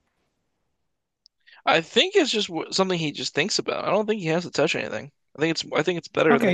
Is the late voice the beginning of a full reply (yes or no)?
yes